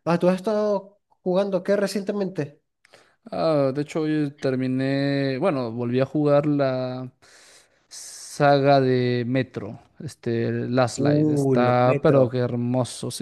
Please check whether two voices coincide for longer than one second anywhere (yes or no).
yes